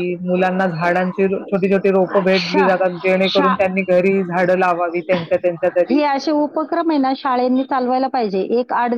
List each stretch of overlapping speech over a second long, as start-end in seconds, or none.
none